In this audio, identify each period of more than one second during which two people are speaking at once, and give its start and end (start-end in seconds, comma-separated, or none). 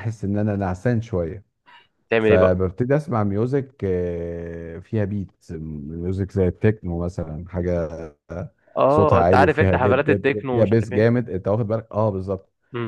8.9-11.2